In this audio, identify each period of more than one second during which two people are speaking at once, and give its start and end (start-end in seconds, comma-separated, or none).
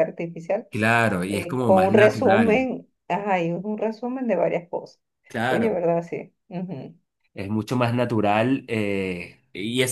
1.3-2.7